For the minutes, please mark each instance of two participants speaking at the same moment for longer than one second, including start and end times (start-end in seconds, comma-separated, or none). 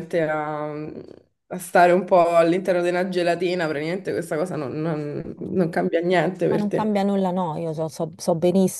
none